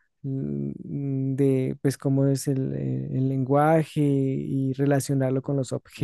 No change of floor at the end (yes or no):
yes